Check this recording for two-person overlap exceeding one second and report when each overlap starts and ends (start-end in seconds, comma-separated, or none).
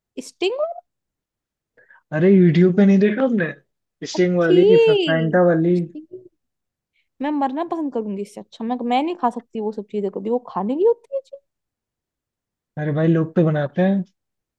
none